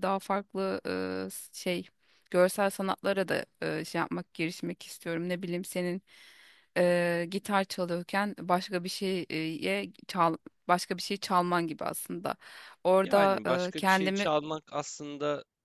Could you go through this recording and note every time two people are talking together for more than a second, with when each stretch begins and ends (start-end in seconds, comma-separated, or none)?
13.0-14.3